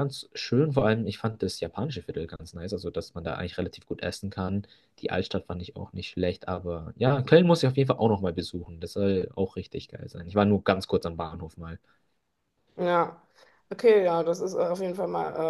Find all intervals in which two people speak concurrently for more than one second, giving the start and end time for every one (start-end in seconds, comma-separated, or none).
none